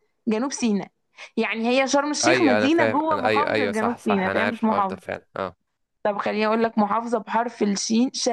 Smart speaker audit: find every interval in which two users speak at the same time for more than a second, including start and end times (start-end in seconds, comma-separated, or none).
2.2-5.2